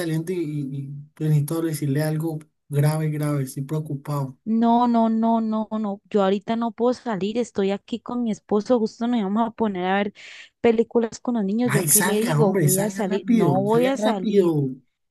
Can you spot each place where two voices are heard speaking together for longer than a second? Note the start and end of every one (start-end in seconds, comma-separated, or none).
11.7-14.5